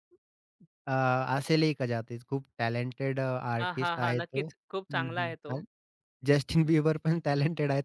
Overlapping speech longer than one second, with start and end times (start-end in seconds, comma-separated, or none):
3.6-5.6